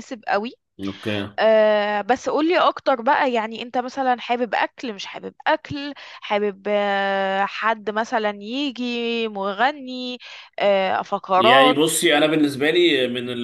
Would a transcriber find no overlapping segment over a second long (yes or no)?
yes